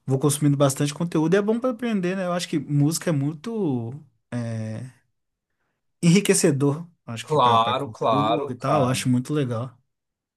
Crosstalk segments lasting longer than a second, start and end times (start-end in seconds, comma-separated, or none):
7.2-9.0